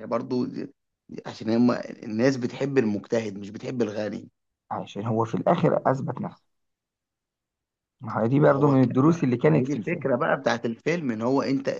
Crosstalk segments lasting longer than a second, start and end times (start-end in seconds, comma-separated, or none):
8.4-10.1